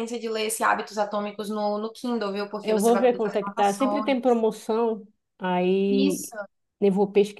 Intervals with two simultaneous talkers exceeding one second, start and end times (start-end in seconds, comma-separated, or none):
2.6-4.1